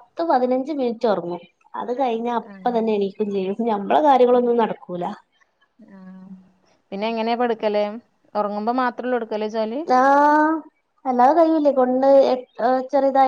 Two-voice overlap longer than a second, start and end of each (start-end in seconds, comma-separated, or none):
none